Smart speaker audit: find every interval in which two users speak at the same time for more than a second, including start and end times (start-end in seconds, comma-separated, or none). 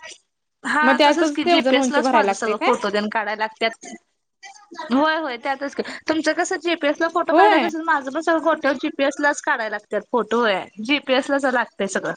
0.8-2.7